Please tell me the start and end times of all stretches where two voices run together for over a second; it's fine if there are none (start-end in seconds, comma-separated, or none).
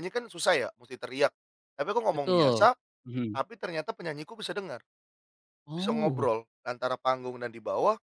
none